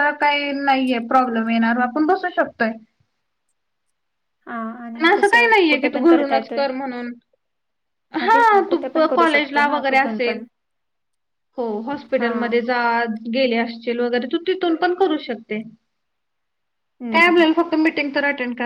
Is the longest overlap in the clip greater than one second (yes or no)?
yes